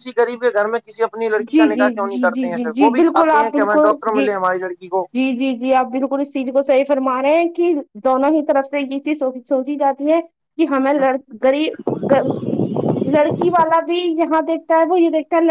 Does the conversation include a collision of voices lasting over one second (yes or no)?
yes